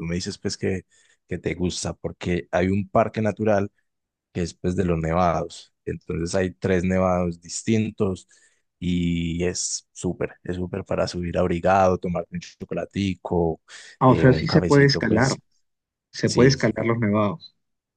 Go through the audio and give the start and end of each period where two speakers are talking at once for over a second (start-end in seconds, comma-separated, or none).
14.1-15.4